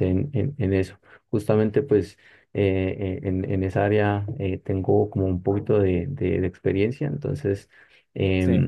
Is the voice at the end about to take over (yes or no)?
no